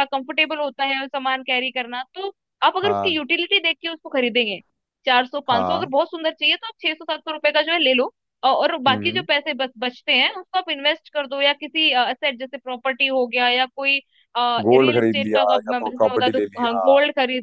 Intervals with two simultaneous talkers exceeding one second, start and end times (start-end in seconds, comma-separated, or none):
14.7-16.9